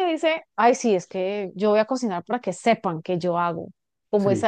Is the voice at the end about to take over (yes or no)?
no